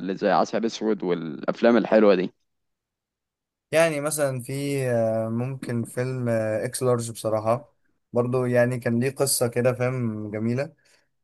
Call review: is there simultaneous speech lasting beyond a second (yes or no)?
no